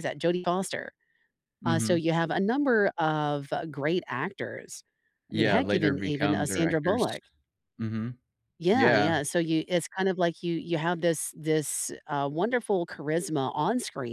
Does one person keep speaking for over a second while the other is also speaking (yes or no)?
yes